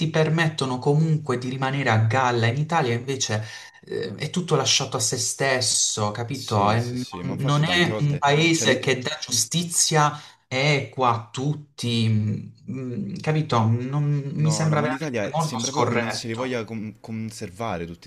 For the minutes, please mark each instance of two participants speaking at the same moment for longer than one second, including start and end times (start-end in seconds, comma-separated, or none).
6.3-8.9, 14.4-16.6